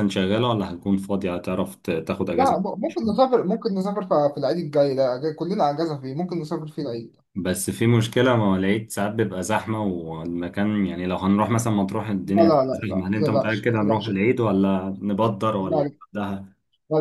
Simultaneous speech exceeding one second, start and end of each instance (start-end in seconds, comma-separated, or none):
12.2-14.1